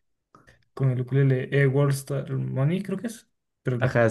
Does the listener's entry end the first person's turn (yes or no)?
yes